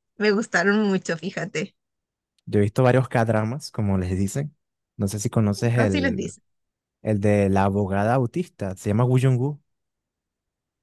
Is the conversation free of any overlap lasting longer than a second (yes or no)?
yes